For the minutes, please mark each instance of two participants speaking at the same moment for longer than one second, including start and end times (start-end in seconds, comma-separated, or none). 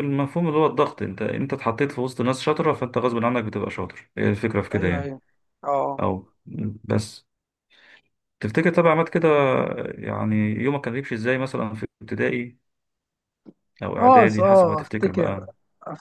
14.0-15.5